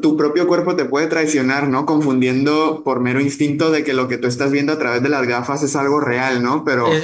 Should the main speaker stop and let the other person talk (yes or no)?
yes